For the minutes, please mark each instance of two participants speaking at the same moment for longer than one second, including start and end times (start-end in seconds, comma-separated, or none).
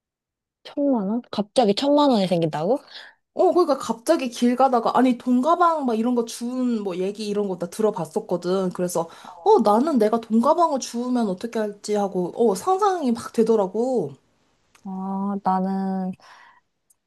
none